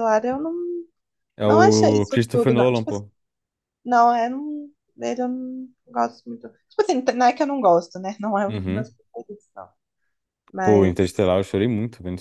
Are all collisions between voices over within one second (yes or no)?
no